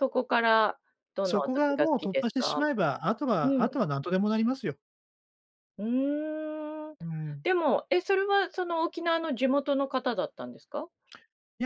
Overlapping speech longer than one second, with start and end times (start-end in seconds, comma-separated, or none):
1.2-2.6